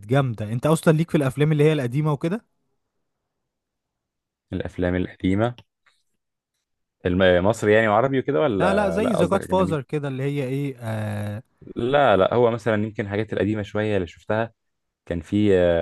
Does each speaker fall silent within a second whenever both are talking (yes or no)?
no